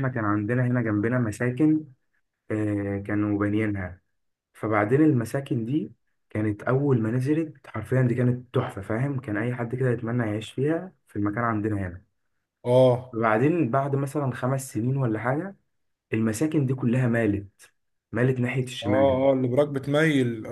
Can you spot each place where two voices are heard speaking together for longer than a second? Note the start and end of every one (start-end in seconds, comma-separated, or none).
none